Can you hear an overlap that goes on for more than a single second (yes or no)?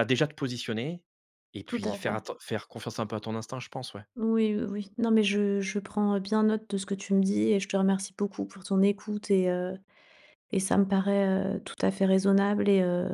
no